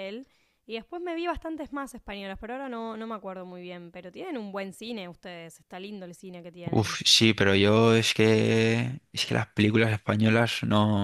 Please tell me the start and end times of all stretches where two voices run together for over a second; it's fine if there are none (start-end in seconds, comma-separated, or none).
none